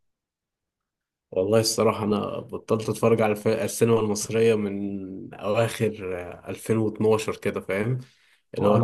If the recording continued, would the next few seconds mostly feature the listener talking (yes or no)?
no